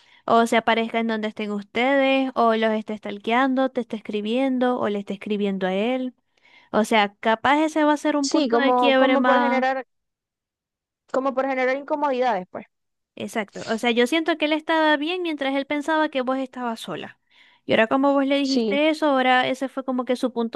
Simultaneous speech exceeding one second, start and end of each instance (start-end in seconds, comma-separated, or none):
8.2-9.6